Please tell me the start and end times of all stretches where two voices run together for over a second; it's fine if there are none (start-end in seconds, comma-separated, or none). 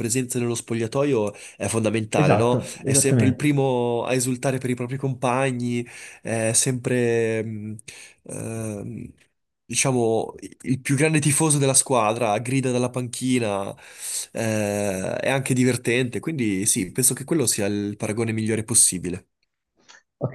2.1-3.5